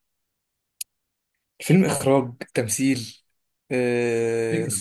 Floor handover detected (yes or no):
no